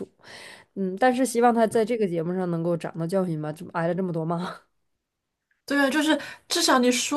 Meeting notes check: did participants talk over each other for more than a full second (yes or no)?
no